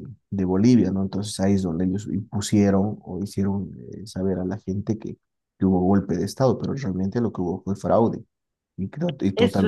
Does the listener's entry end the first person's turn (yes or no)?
yes